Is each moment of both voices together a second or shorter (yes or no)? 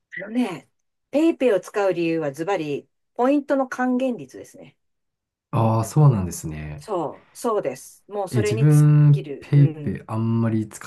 no